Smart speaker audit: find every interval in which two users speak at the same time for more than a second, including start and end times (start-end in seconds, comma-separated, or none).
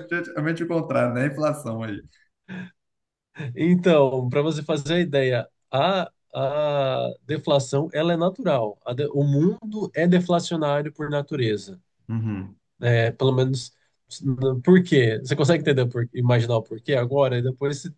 none